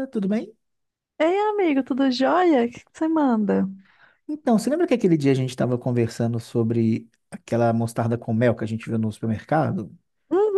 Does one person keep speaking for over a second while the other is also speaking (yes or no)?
no